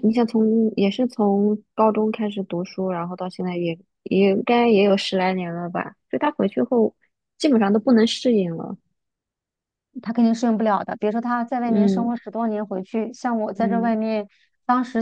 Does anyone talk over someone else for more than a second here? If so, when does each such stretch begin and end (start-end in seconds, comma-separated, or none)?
none